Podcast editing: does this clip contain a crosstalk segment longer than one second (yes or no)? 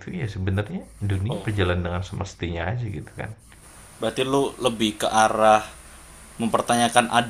no